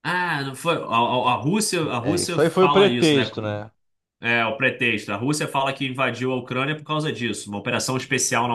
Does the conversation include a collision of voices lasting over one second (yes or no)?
yes